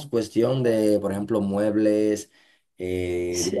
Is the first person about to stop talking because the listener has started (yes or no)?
no